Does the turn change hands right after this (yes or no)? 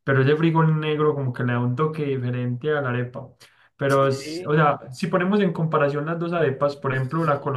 no